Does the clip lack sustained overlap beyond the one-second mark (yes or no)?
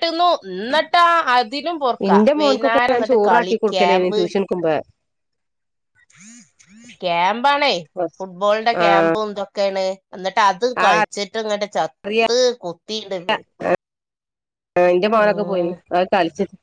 no